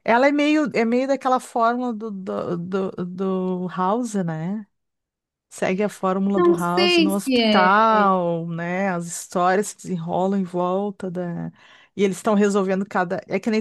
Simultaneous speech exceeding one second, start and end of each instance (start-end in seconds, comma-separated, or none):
6.3-8.0